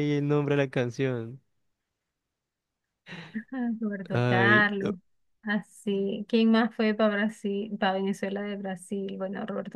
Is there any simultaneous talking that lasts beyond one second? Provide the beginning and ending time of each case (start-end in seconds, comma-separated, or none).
none